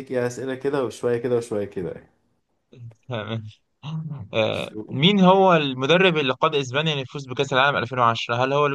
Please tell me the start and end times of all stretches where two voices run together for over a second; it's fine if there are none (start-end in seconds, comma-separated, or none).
none